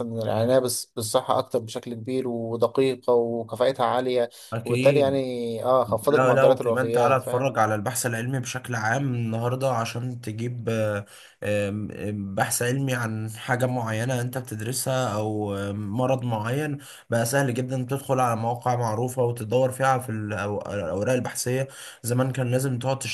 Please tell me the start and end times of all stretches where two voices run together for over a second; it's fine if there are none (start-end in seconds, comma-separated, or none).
6.1-7.5